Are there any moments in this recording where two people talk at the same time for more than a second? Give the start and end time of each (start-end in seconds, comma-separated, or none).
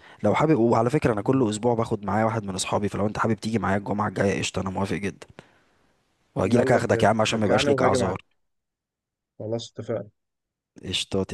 6.4-8.2